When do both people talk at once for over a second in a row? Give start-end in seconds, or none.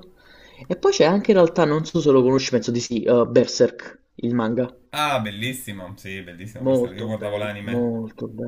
6.6-7.9